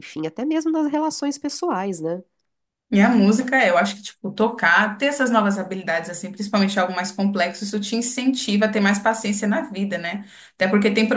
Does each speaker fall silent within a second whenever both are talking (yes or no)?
yes